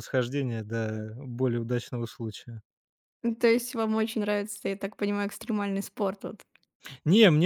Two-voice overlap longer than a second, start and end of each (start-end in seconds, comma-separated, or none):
none